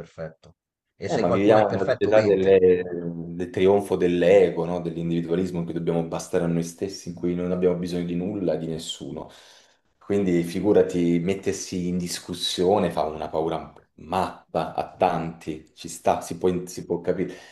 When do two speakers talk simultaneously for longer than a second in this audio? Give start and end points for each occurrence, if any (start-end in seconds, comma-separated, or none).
1.0-2.6